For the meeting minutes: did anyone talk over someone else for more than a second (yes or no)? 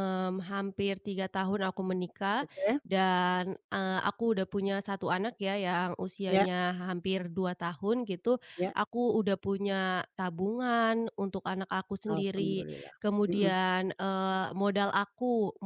no